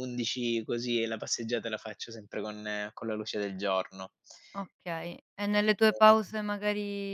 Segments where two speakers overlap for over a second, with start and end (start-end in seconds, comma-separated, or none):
none